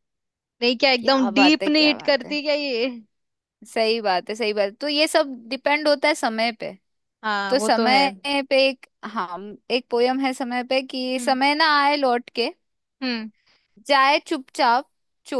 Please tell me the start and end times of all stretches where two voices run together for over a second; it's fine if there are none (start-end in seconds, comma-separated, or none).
1.0-2.4